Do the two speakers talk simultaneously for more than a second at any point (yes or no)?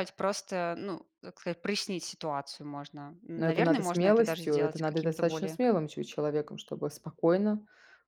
yes